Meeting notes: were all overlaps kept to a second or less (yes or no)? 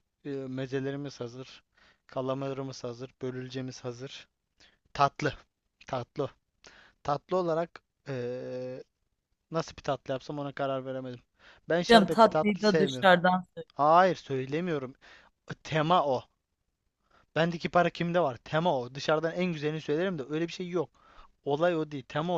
no